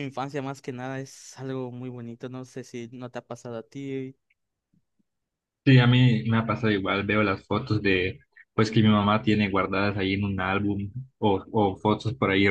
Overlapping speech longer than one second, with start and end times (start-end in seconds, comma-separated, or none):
none